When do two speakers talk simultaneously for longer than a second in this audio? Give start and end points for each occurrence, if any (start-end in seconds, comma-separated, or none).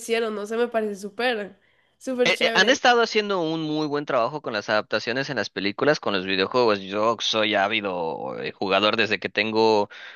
none